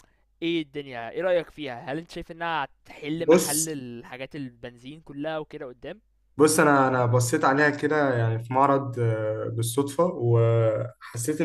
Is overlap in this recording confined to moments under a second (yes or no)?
yes